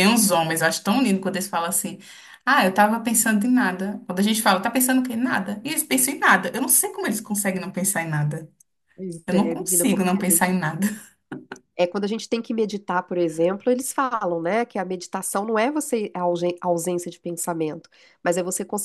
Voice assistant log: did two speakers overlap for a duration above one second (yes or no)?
yes